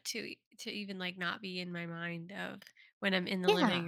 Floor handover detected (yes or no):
no